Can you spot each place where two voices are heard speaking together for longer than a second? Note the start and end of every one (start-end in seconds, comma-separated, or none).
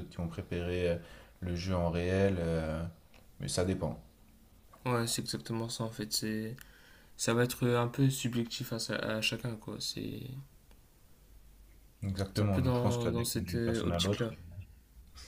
12.3-14.3